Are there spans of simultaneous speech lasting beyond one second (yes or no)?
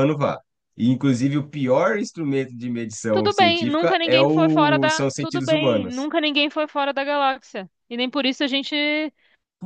yes